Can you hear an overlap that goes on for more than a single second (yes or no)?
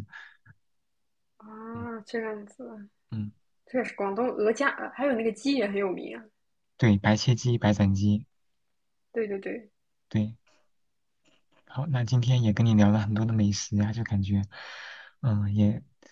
no